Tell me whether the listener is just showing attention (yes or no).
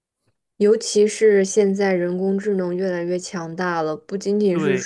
no